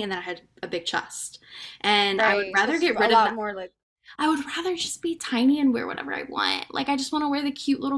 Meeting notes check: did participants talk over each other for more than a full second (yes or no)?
yes